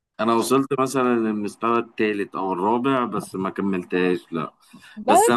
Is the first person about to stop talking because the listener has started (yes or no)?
no